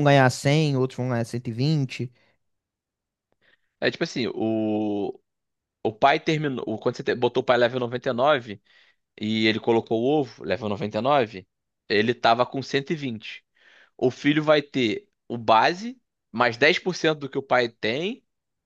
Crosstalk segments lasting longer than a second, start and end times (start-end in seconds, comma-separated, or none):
none